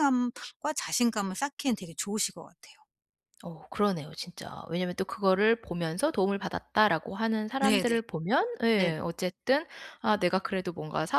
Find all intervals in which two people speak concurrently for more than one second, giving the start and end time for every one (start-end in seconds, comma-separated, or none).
none